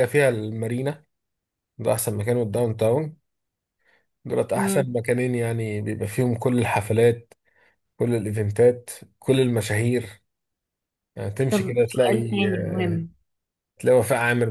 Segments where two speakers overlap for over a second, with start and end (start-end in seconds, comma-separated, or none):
11.5-13.1